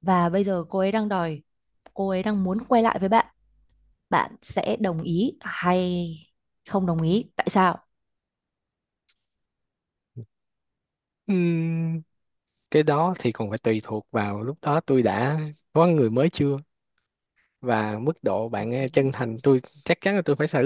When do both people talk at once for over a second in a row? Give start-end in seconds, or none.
none